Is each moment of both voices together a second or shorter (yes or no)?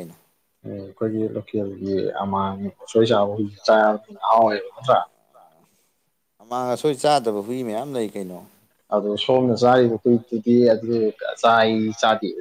yes